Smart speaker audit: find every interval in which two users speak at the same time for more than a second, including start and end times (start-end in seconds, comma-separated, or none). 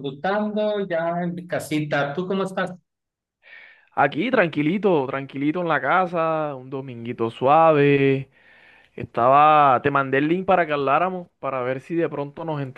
none